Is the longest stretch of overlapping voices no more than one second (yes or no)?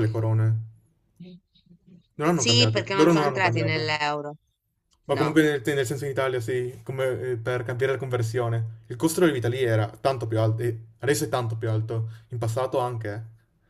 no